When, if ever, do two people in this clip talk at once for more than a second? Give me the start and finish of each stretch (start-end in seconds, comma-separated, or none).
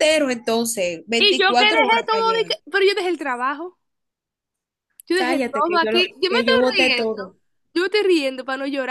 1.2-2.5, 5.1-7.3